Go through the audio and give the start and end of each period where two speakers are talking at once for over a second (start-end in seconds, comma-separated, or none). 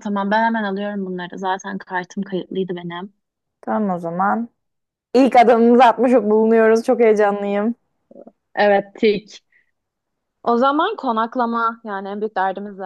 none